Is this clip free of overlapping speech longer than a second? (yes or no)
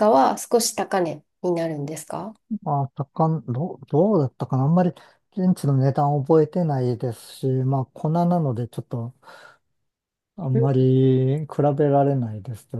yes